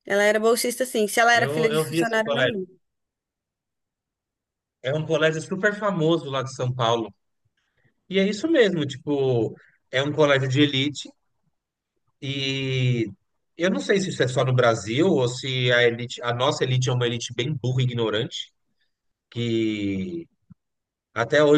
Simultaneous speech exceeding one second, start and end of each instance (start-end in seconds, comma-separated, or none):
1.3-2.6